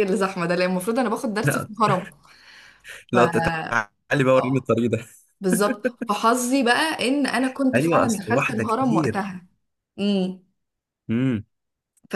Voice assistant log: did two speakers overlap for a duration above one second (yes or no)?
yes